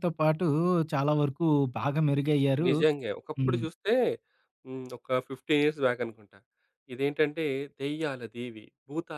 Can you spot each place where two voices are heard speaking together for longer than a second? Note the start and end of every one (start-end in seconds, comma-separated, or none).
none